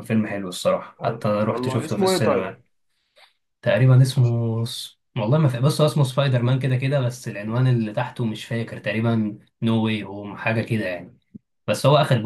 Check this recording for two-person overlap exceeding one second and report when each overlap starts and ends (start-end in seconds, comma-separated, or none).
1.0-2.5